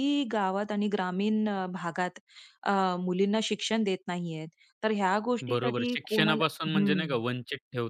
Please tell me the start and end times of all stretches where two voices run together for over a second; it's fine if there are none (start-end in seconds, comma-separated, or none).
5.5-7.0